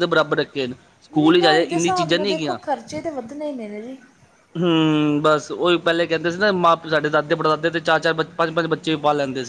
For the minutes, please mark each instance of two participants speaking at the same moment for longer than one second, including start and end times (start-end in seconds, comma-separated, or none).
1.1-2.6